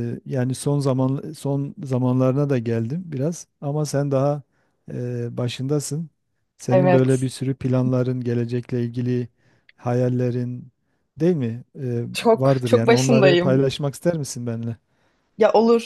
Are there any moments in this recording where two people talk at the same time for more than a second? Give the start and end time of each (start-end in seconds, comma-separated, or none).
12.1-13.7